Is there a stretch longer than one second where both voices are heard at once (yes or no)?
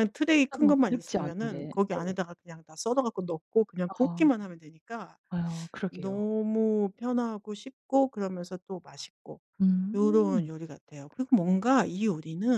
yes